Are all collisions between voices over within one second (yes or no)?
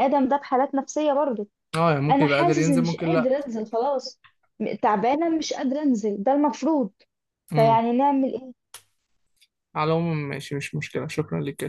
no